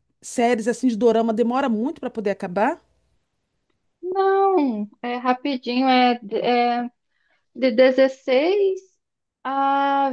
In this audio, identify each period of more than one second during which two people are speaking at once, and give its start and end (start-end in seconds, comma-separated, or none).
none